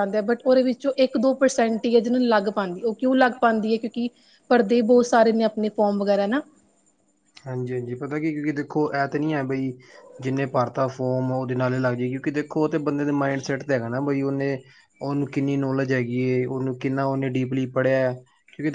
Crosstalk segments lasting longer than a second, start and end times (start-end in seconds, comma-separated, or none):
none